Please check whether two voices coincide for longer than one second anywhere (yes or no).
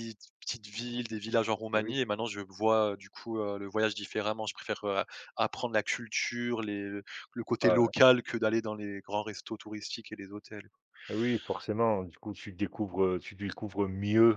no